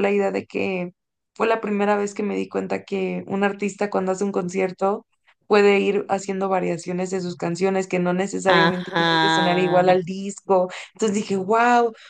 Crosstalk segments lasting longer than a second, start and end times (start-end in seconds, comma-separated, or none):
8.5-10.0